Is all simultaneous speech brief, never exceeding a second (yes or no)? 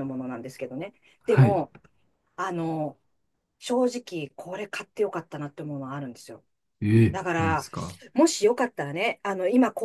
yes